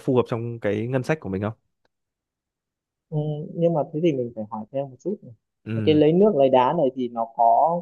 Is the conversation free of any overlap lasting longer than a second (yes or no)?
yes